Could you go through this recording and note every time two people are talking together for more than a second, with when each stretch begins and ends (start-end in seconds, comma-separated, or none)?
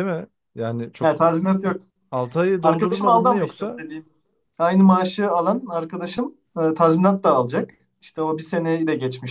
2.6-3.8